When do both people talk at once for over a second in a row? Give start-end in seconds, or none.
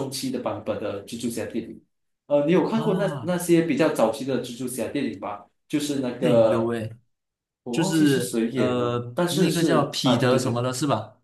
7.7-10.6